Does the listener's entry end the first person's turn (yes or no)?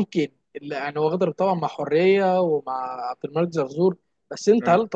no